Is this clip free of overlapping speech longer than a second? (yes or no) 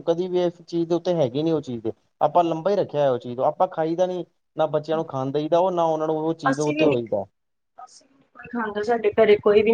yes